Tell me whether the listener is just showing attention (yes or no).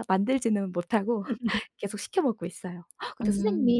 yes